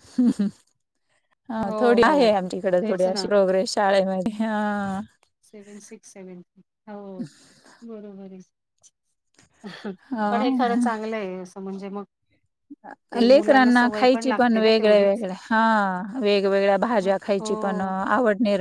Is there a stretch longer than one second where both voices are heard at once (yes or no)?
yes